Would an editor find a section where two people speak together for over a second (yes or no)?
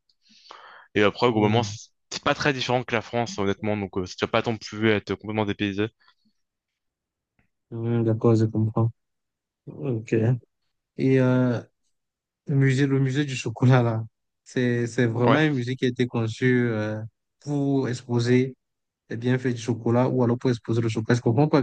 no